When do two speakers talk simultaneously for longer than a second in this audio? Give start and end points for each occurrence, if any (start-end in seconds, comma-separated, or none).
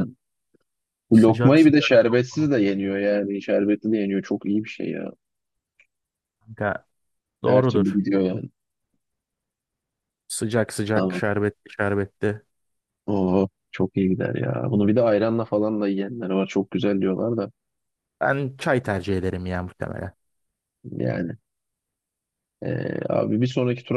1.1-2.5